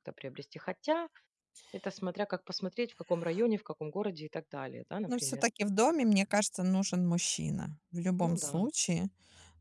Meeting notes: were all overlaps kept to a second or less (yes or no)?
yes